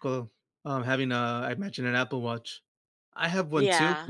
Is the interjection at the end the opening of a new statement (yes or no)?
no